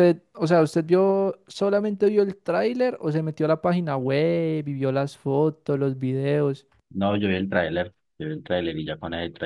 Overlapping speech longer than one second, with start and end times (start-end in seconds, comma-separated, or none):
none